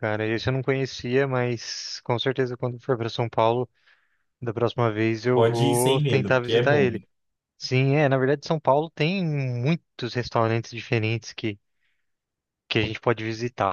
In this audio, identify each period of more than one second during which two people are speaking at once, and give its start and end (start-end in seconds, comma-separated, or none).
5.3-7.0